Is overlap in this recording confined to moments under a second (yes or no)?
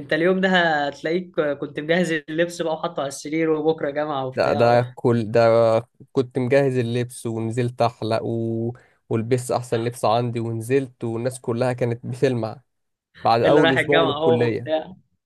no